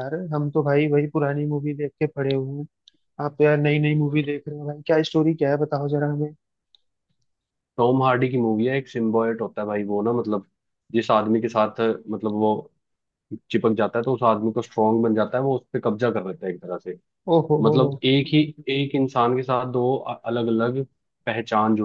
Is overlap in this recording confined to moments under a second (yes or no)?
yes